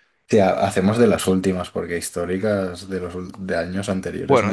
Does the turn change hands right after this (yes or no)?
yes